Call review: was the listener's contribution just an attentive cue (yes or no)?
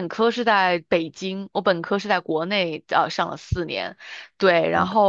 yes